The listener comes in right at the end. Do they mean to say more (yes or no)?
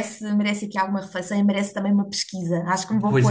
no